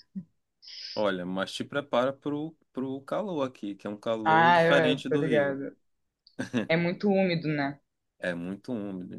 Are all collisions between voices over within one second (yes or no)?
no